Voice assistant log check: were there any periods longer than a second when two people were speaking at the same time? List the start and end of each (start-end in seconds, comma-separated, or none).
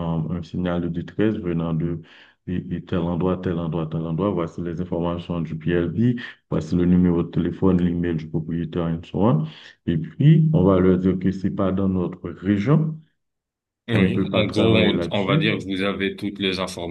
13.9-15.5